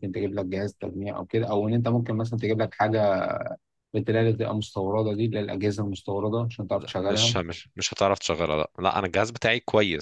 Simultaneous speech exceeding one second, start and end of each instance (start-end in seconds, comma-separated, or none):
none